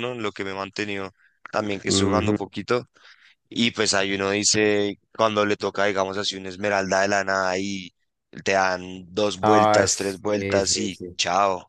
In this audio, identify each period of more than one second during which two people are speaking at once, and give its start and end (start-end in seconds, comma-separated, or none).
9.4-11.2